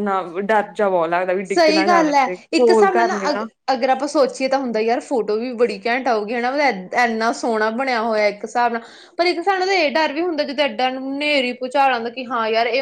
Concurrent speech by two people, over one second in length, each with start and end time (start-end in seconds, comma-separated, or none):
1.5-3.5